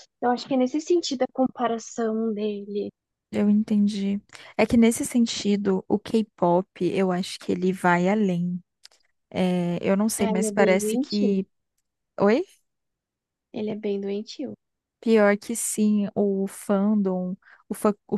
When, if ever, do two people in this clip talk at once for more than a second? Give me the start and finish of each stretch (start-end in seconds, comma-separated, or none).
10.2-11.4